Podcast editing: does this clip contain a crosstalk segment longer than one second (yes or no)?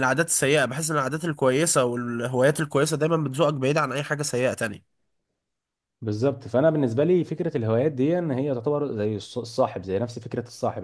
no